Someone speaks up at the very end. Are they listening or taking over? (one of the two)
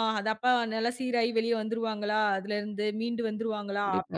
listening